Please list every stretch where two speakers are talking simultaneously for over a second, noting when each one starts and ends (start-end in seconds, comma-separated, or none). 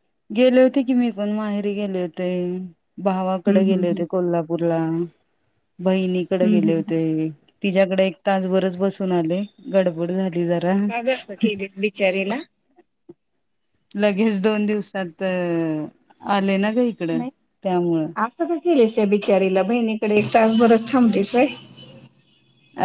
none